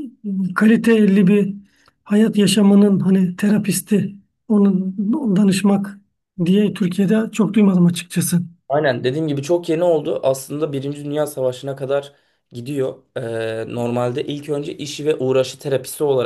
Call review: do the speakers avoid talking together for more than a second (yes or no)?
yes